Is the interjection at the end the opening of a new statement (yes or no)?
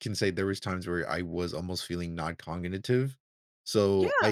no